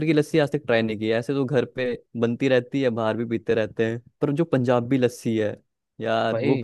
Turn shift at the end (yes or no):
yes